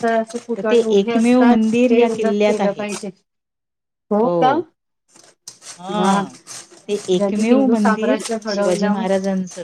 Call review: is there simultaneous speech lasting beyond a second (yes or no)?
yes